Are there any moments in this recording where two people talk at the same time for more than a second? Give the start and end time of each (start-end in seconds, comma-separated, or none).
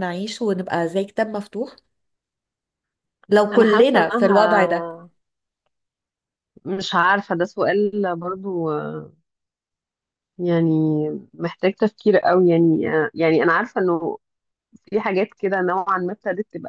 3.5-4.9